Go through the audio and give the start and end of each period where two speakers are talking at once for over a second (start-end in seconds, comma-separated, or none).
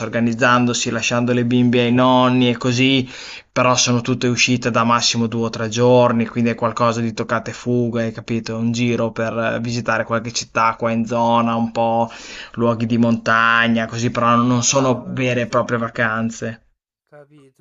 14.5-15.7